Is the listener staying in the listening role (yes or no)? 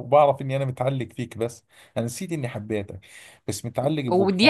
no